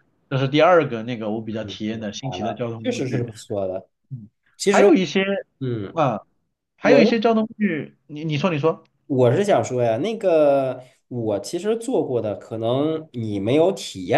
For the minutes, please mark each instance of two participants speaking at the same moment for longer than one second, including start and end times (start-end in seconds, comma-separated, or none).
1.5-3.3